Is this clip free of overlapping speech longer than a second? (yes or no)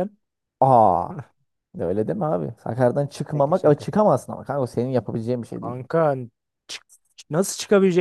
yes